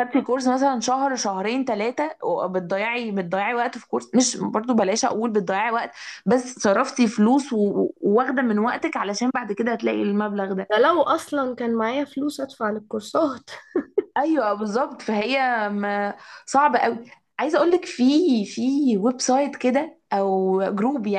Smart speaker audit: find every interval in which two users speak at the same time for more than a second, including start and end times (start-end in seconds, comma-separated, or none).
none